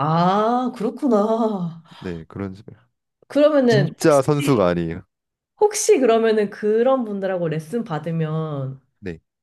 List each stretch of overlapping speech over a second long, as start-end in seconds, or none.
none